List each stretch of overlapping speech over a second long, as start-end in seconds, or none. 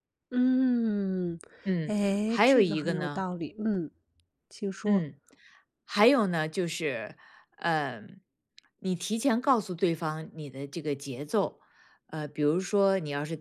1.9-3.3